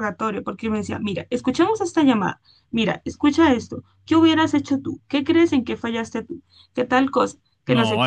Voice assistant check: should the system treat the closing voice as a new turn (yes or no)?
yes